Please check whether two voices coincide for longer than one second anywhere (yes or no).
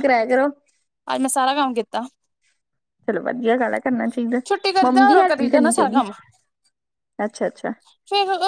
yes